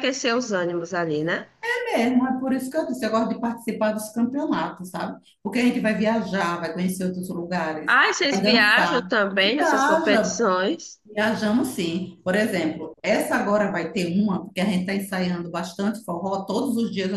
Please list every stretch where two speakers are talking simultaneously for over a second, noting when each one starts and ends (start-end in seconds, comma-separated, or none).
7.8-10.4